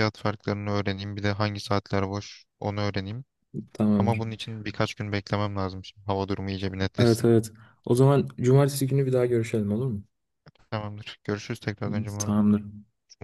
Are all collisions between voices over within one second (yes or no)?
yes